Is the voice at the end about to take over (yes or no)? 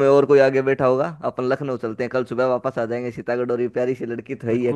yes